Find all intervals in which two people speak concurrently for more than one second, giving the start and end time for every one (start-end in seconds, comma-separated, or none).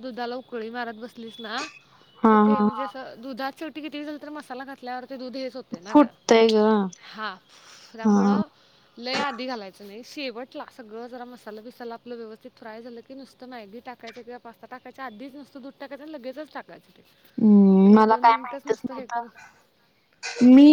17.9-19.3